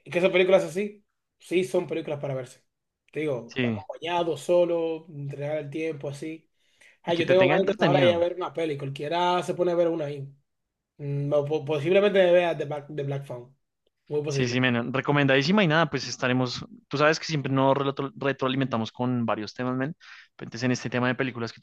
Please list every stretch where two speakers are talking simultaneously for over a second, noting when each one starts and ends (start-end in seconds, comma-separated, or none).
7.0-8.2